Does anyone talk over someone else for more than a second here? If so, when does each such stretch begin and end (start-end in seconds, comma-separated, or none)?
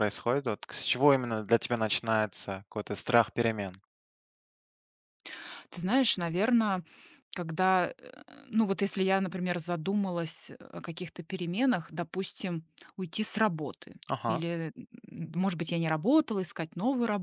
none